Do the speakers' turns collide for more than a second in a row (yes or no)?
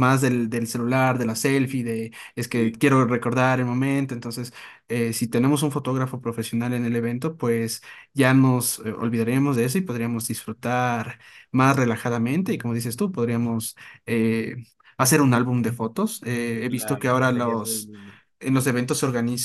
yes